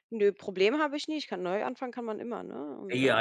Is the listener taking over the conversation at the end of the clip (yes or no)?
yes